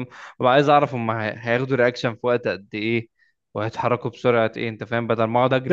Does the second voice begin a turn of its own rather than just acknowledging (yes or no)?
yes